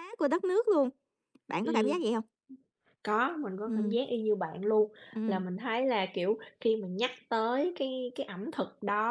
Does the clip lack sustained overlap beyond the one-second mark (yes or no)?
yes